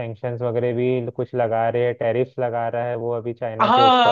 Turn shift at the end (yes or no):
yes